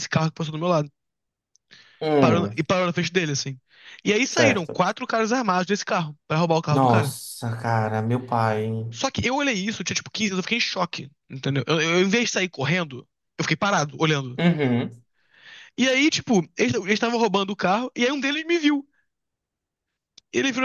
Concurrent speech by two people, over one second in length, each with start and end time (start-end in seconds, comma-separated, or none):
none